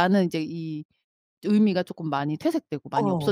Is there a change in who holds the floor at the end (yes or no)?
yes